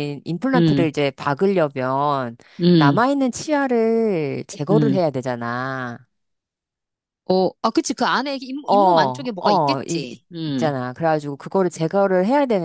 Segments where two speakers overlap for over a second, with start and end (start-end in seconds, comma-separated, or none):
8.7-10.7